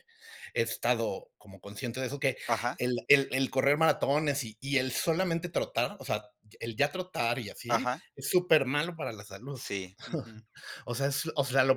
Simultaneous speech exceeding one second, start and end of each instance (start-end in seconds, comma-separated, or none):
none